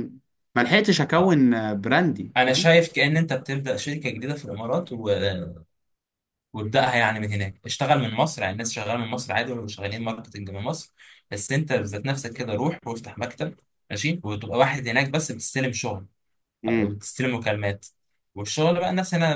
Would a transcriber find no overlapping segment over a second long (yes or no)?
yes